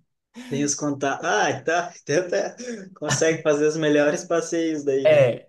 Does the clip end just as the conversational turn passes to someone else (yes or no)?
yes